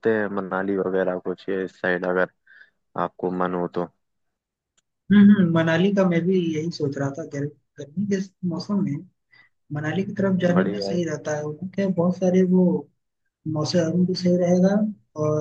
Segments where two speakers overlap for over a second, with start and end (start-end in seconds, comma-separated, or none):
none